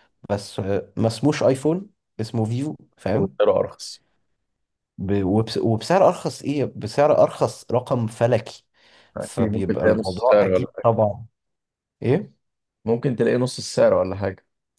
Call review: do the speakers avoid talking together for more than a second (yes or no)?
no